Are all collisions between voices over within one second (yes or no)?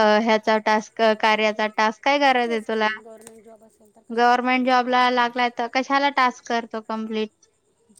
no